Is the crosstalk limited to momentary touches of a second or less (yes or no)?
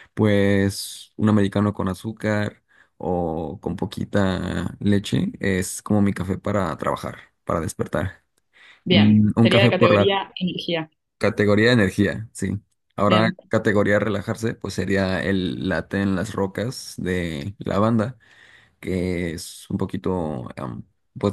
no